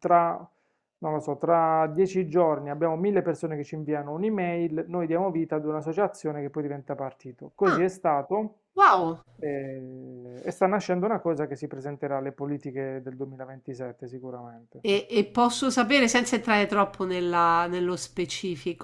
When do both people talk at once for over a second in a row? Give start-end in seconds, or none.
none